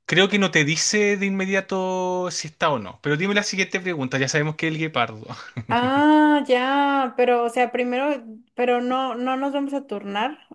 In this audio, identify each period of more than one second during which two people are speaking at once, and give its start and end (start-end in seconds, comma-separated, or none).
none